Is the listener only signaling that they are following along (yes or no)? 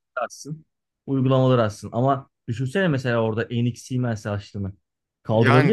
no